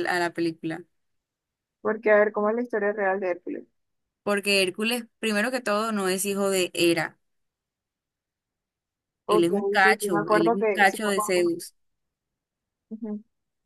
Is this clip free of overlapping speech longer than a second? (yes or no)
no